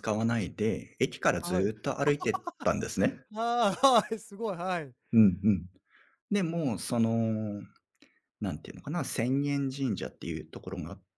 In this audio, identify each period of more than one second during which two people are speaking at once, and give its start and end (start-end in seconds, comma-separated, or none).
none